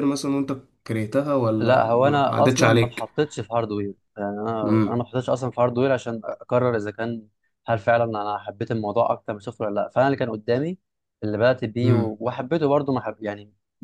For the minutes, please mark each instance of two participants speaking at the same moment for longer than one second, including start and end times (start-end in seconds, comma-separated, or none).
1.6-3.0